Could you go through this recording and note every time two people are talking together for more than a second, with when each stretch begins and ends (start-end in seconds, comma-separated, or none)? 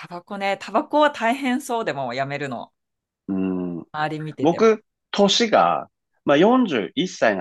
none